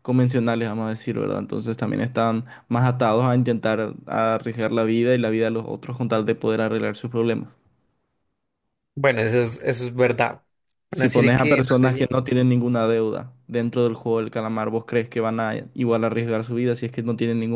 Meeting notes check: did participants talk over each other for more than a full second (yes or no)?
yes